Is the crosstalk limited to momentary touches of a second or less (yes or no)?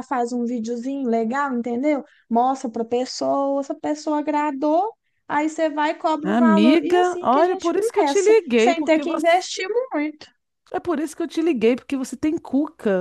no